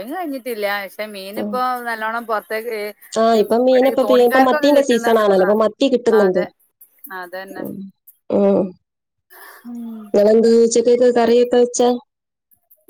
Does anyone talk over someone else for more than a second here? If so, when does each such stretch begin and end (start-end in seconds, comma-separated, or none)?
3.4-5.4